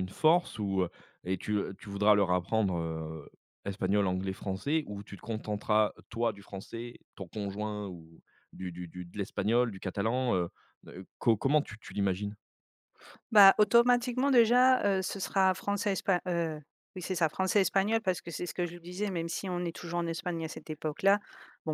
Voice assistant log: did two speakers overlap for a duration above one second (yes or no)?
no